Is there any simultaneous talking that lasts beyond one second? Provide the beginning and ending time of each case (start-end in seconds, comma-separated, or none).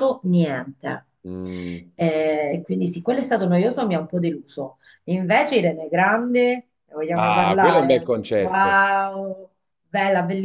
7.1-8.8